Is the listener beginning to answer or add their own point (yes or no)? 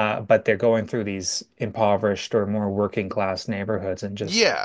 yes